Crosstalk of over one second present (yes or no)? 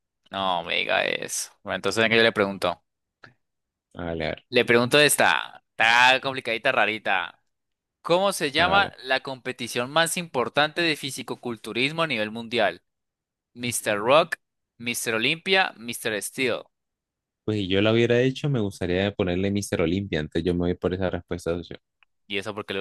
no